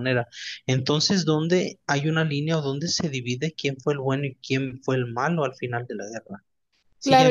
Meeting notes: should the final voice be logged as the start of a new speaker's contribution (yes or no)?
yes